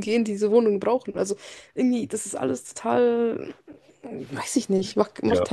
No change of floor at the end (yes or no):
no